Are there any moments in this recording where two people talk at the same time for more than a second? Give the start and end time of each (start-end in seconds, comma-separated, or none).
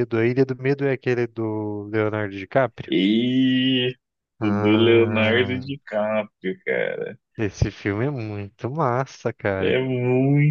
4.4-5.7